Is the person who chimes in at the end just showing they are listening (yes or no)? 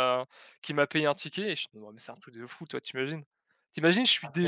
yes